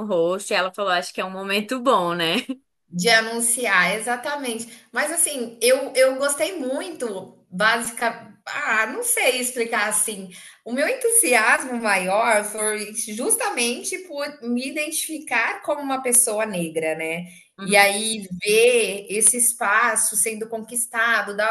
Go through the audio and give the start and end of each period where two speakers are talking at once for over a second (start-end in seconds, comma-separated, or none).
none